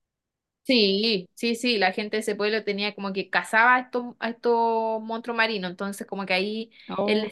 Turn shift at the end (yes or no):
no